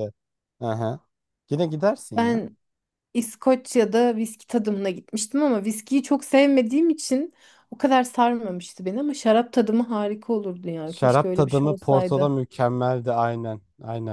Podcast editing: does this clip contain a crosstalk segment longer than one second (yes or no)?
yes